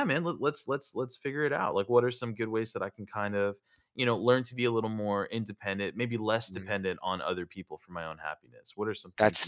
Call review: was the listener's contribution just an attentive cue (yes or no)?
no